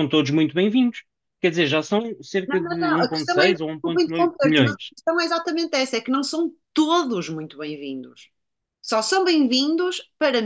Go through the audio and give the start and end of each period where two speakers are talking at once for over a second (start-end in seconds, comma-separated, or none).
2.5-4.9